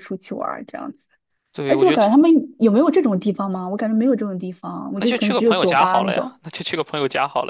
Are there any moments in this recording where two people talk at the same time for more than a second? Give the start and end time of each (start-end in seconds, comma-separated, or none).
4.9-6.4